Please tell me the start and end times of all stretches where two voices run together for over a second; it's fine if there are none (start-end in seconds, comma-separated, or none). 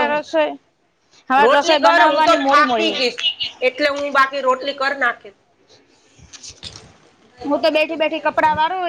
1.4-3.2